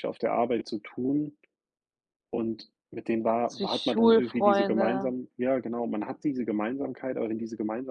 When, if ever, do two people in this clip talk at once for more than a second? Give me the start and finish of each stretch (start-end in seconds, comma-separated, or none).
3.5-5.1